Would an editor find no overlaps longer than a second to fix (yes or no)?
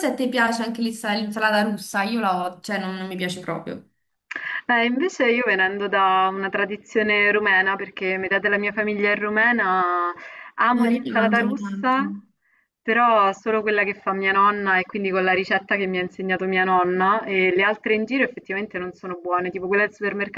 no